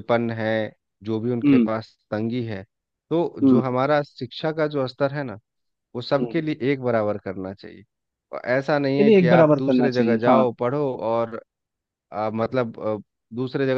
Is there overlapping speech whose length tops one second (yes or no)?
yes